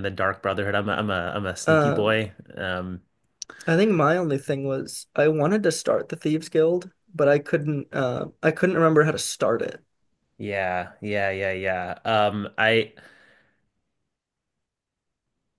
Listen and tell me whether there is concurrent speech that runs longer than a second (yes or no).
no